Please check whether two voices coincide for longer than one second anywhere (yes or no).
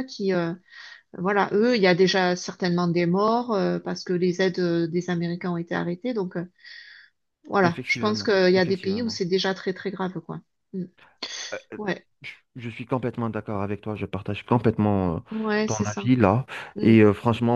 yes